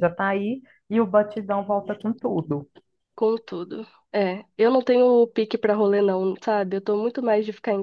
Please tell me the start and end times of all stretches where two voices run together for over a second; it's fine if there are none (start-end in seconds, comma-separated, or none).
none